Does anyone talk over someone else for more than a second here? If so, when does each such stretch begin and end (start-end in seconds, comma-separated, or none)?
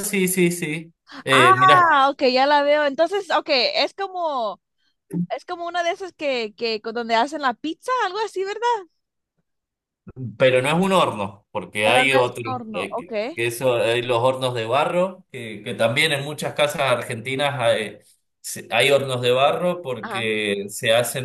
none